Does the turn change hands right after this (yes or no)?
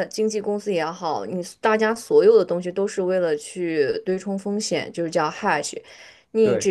no